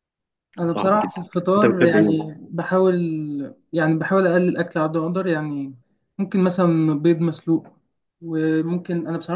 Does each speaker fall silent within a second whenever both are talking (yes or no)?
no